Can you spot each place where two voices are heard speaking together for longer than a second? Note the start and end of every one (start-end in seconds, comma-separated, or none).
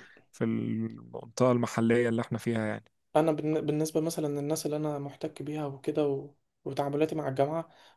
none